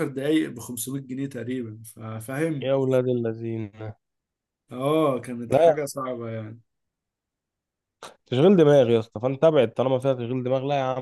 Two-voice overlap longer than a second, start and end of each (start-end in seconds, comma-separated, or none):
none